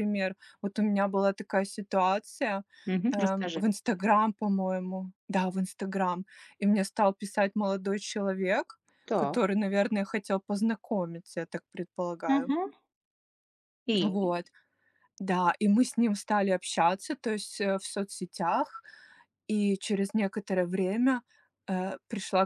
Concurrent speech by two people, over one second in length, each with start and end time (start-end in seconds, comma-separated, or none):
none